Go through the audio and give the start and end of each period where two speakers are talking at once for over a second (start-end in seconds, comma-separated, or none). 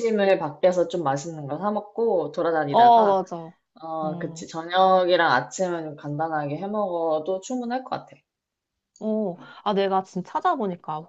none